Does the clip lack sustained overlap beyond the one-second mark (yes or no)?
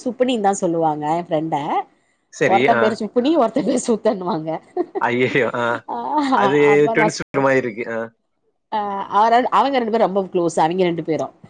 yes